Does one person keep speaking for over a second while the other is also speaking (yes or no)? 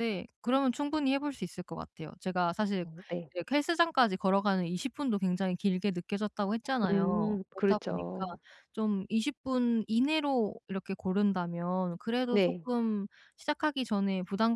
yes